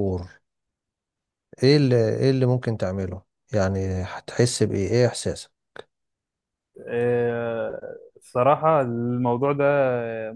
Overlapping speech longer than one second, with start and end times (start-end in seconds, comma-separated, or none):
none